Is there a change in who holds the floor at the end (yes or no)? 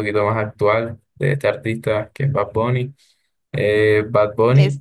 no